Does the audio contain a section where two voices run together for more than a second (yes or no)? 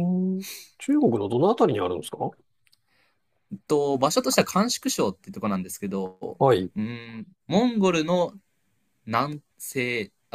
no